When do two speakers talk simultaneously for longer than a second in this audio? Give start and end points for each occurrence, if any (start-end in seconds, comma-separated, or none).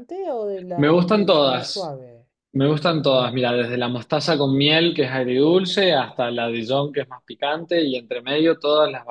0.8-1.9